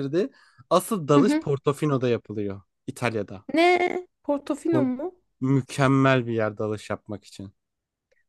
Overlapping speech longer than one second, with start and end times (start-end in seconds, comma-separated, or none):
none